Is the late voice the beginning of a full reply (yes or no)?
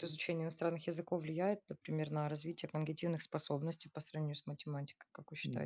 yes